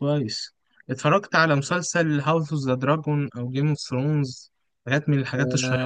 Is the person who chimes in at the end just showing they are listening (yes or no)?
no